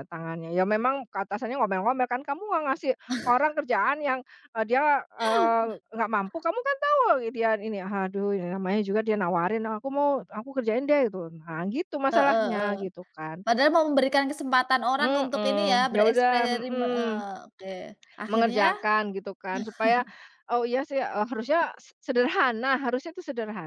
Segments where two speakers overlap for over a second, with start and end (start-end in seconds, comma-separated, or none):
15.0-17.3